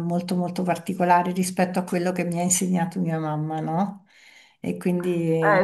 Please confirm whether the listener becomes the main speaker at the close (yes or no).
yes